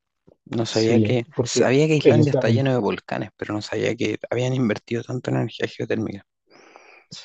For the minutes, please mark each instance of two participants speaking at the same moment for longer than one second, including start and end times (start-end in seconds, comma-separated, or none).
0.7-2.7